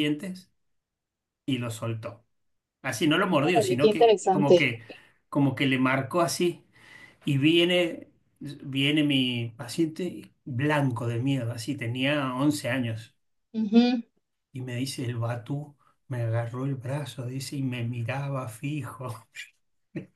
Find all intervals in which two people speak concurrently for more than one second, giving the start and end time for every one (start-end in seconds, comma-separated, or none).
3.4-4.7